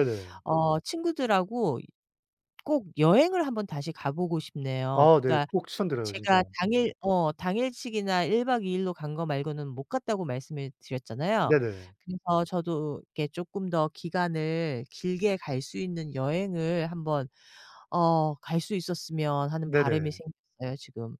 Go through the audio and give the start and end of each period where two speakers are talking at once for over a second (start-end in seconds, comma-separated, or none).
none